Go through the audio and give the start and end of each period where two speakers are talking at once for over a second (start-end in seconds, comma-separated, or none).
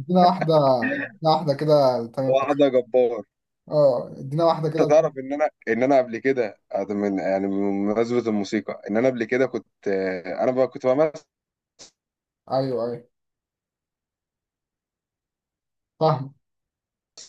none